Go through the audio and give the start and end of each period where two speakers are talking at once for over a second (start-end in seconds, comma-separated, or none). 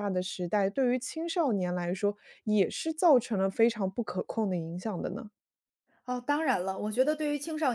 none